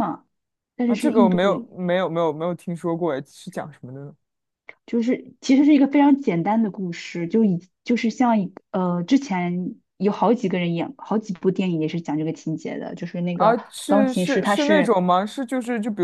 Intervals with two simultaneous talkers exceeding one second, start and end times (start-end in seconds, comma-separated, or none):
13.3-15.0